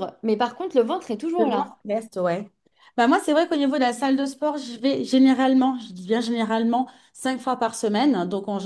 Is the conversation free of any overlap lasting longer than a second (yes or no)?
yes